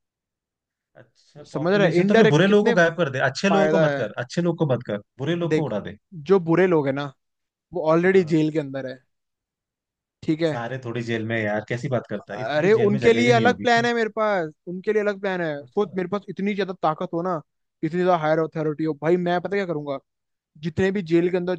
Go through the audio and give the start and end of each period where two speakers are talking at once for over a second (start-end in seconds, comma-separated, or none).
1.5-2.7, 12.3-13.7